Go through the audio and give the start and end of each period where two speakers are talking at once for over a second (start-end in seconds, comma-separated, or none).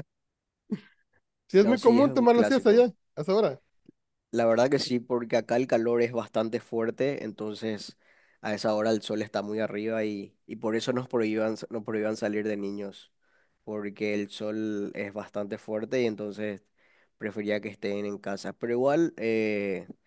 1.6-2.9